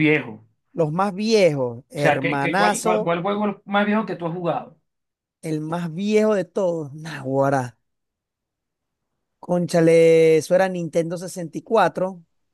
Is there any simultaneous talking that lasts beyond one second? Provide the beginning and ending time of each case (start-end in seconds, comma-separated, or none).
1.9-3.2